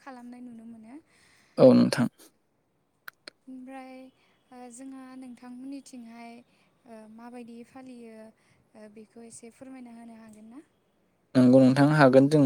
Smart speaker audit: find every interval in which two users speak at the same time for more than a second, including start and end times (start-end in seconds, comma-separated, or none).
none